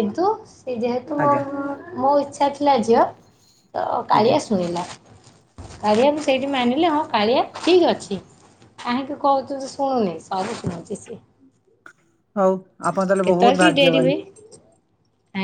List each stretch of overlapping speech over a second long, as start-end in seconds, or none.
none